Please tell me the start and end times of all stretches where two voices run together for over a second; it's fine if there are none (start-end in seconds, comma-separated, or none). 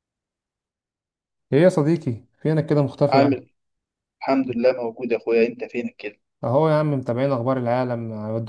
none